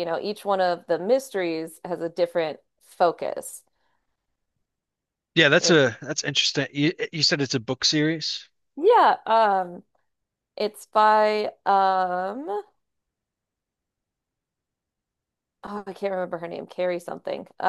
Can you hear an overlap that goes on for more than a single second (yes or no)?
no